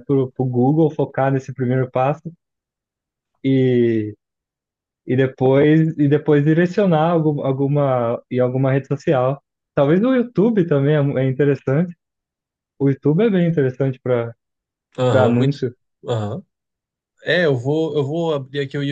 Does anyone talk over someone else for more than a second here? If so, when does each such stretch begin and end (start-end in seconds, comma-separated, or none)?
none